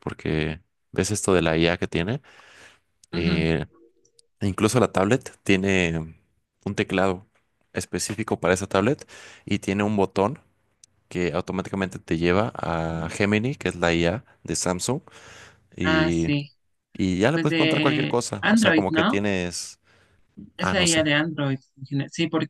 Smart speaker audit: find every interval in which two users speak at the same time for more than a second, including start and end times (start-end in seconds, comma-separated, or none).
17.3-19.2